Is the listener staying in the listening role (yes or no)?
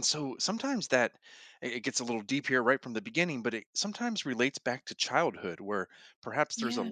yes